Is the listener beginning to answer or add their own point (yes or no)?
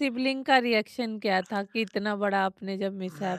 yes